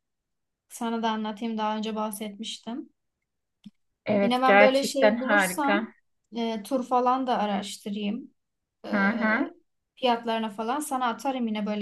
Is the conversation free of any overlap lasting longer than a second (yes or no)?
no